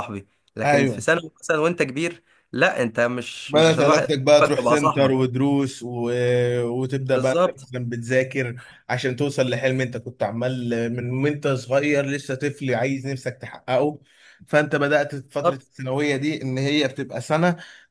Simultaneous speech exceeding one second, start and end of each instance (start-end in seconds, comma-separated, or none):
3.5-5.1